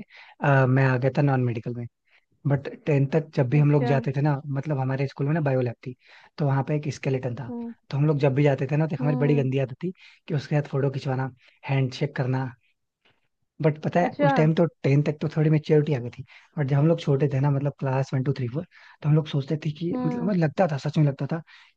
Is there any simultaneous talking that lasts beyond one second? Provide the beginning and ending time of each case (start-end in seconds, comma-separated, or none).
none